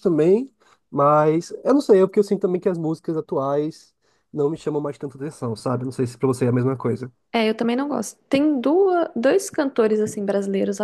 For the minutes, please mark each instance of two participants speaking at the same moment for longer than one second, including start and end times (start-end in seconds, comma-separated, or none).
none